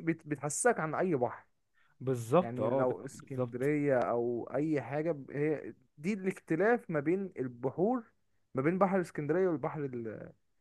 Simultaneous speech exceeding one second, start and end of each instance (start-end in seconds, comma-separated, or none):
2.4-3.8